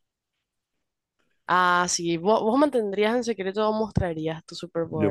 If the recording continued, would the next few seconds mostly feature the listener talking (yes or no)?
yes